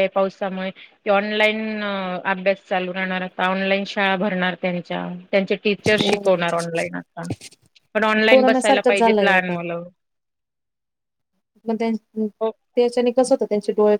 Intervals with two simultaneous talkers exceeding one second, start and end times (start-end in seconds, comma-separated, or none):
8.3-9.6